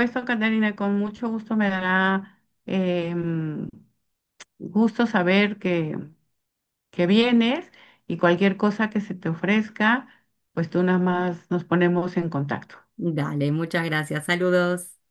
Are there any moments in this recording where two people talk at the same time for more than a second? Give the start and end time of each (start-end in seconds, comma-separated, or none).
none